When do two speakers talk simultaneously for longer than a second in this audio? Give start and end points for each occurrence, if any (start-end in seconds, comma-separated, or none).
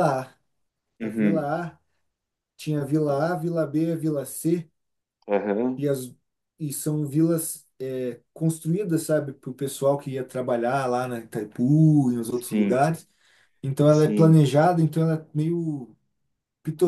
none